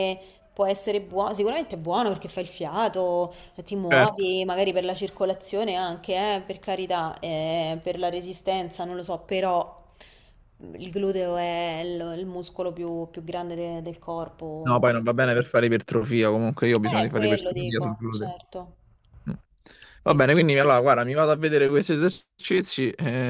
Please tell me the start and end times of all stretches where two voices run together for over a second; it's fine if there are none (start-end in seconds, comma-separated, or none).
17.0-18.3